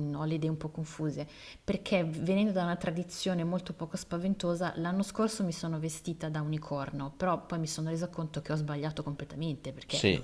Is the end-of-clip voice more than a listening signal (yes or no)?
yes